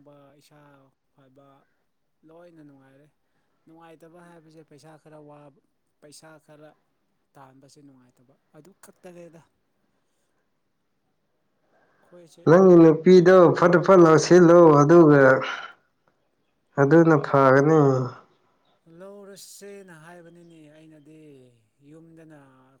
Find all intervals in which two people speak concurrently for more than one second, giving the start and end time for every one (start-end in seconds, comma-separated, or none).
none